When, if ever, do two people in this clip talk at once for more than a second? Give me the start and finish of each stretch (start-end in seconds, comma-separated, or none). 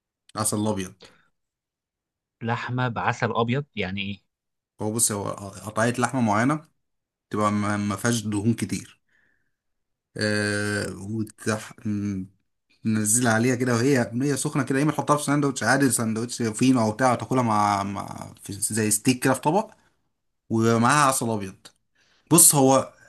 none